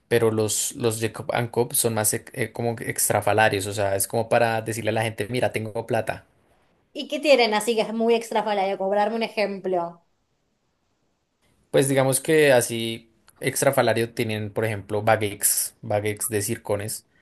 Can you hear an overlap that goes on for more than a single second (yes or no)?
no